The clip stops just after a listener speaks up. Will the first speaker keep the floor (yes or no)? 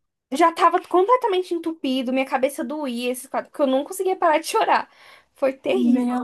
no